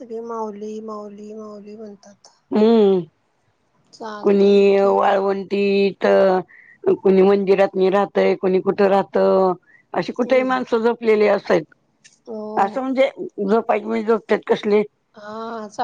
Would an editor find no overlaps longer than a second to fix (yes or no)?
no